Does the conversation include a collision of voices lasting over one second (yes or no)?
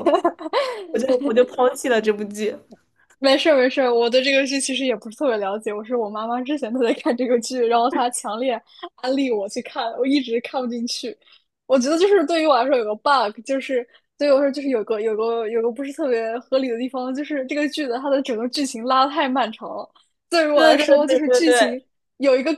yes